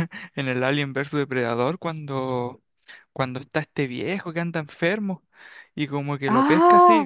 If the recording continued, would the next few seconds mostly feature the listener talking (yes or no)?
no